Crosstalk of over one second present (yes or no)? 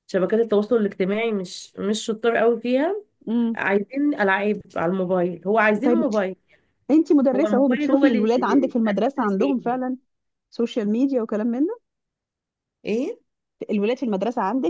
yes